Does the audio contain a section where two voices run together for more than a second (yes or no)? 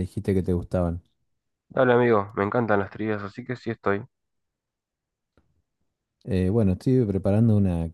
no